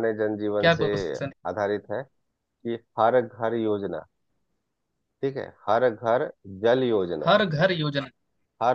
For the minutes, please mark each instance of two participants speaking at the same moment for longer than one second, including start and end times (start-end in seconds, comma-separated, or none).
none